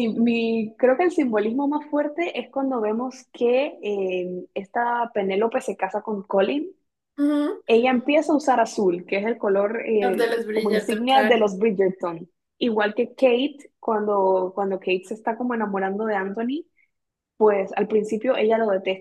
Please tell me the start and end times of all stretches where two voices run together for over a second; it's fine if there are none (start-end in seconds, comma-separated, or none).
10.0-11.4